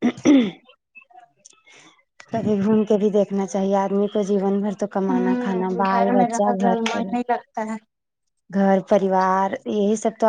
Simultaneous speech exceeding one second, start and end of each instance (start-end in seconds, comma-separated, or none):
5.1-7.1